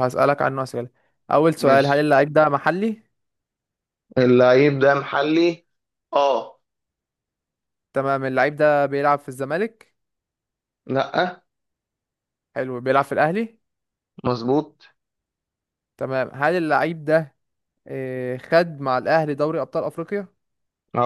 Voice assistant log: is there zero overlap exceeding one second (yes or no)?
yes